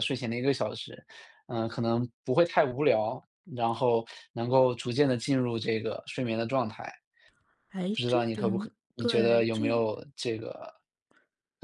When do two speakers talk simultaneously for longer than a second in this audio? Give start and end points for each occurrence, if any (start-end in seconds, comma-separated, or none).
8.0-9.8